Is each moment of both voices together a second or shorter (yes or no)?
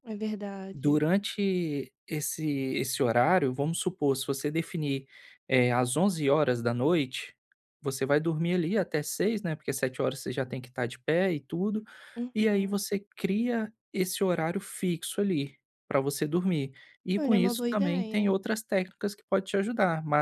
no